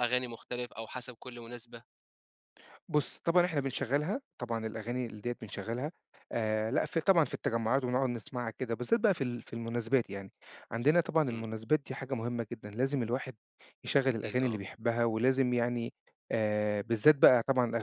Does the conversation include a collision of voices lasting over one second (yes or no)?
no